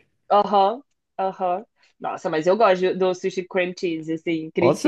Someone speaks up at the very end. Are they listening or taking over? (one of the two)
taking over